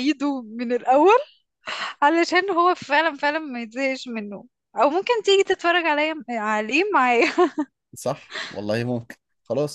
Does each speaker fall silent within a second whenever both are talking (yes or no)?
yes